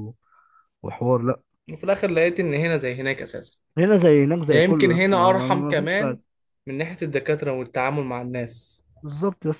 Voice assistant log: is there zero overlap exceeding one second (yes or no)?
no